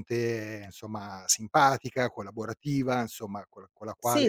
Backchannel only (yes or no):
no